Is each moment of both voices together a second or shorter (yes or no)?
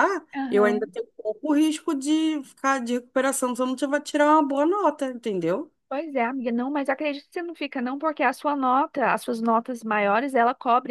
yes